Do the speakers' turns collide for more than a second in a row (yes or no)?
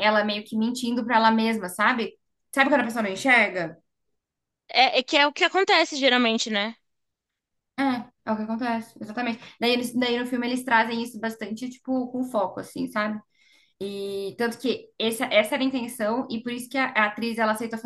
no